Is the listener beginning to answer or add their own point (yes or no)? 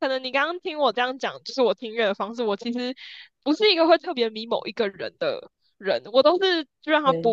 no